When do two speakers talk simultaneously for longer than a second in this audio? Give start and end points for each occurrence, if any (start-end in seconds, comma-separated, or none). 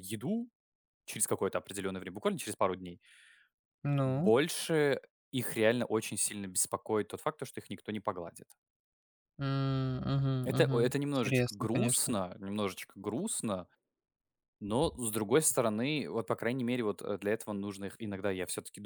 10.4-12.1